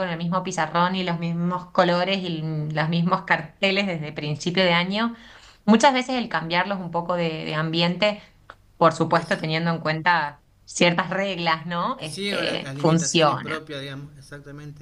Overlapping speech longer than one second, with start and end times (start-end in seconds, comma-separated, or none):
12.0-13.6